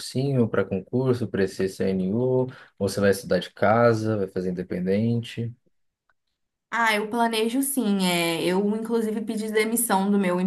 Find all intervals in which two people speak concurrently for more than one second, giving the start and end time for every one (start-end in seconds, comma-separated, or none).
none